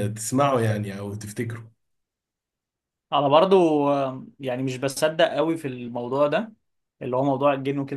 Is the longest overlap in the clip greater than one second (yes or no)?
no